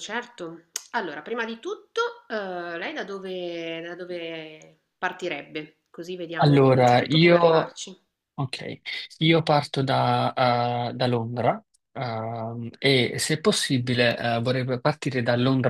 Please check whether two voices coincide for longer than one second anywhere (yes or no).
yes